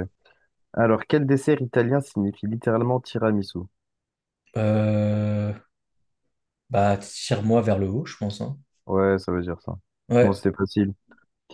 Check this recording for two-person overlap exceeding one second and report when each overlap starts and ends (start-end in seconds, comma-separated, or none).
none